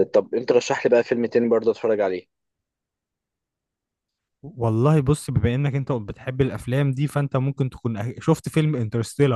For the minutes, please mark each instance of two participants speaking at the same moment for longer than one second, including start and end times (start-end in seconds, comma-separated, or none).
none